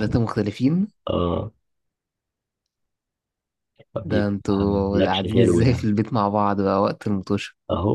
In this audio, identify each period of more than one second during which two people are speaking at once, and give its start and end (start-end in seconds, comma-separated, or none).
4.0-5.9